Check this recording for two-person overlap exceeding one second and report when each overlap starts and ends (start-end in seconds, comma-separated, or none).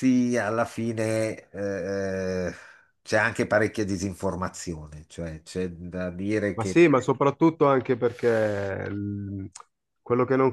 none